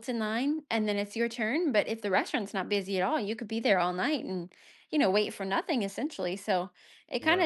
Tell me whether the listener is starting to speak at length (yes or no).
no